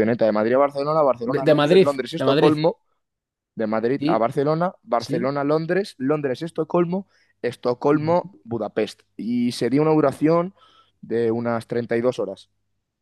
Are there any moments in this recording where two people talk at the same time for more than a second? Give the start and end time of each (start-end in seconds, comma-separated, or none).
1.2-2.5